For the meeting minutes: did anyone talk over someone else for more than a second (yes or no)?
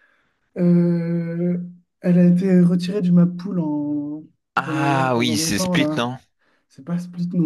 yes